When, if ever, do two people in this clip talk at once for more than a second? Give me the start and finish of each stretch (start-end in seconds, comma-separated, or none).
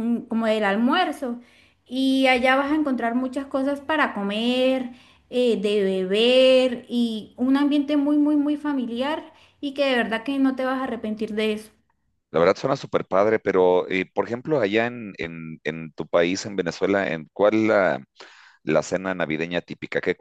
none